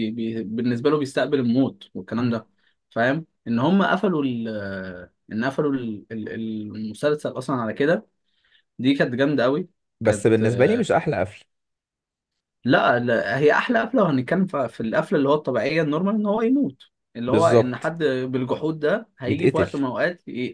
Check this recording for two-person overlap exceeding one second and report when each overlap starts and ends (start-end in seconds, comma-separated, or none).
none